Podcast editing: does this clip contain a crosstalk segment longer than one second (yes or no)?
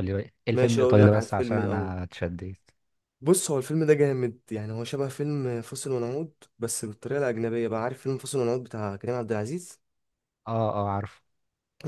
yes